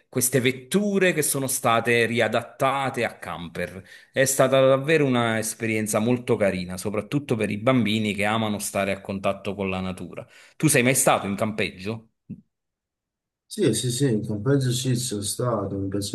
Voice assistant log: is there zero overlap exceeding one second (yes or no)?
yes